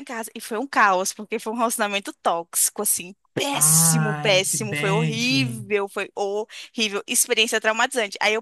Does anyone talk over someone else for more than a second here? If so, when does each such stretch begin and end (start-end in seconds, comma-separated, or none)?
3.5-5.2